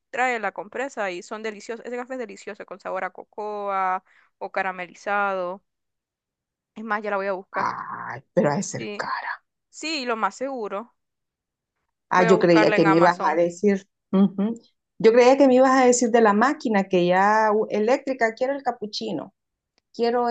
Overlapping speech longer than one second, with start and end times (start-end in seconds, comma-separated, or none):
12.1-13.4